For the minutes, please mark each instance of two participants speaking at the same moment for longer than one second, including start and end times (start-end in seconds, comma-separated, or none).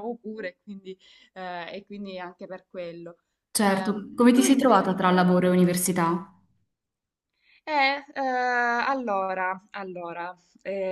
3.6-5.3